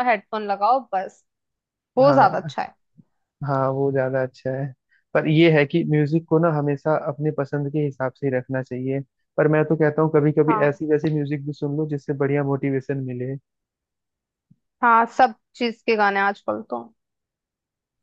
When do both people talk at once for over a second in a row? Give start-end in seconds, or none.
none